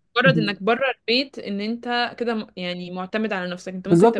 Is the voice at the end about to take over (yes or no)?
yes